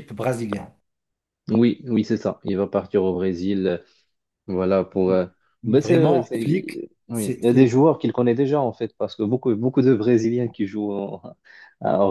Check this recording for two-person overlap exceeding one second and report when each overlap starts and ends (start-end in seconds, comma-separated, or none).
5.7-7.8